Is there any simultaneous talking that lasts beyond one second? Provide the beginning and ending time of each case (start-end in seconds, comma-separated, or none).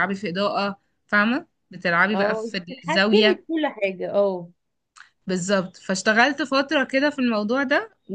2.1-3.4